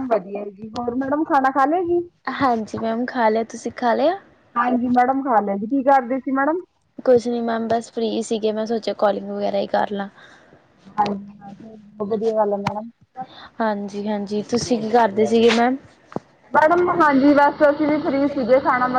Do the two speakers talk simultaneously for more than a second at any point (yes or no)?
no